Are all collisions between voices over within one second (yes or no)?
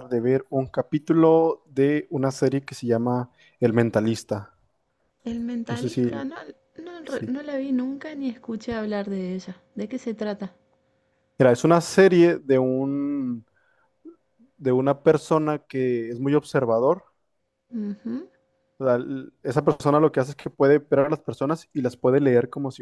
yes